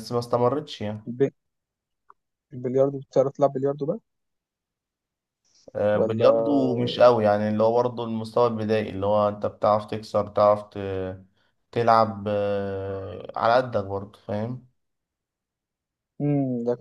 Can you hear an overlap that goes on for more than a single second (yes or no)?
no